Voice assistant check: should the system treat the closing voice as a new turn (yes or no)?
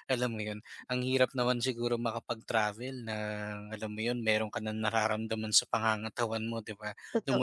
no